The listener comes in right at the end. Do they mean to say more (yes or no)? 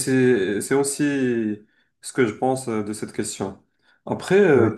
no